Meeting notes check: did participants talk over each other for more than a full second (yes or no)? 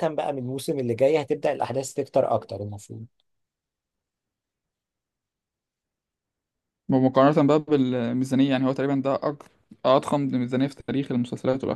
no